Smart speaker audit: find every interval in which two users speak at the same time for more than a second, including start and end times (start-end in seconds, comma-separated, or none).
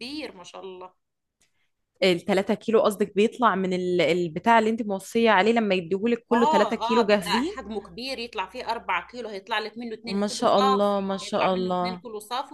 6.3-7.6, 10.1-12.0